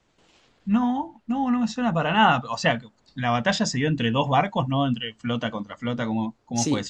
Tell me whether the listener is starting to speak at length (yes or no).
yes